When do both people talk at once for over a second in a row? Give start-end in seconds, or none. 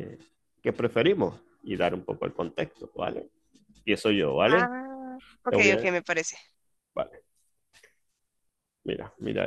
none